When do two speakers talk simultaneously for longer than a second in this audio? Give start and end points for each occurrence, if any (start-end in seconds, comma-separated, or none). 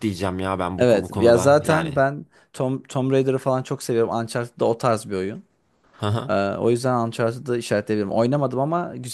0.8-2.0